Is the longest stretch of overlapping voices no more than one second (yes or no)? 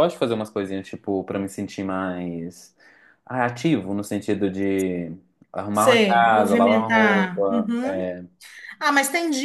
no